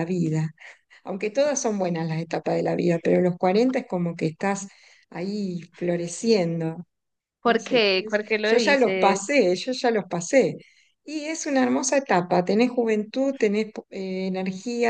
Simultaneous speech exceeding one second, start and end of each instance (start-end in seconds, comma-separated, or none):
7.4-9.4